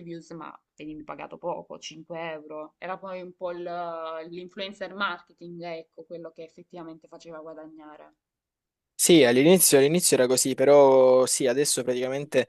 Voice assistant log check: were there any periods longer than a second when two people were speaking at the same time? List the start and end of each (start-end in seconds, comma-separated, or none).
none